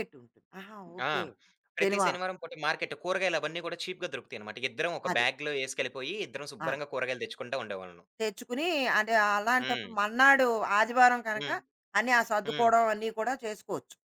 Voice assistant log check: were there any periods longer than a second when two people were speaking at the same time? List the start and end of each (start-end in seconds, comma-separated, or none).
none